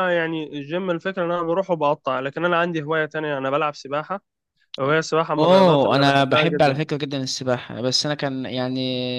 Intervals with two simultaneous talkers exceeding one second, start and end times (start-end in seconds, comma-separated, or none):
5.3-6.8